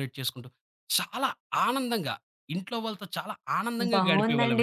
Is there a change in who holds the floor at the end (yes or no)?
yes